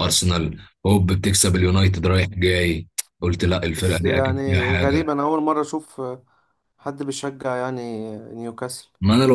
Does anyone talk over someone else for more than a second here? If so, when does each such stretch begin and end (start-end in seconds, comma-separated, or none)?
3.8-5.1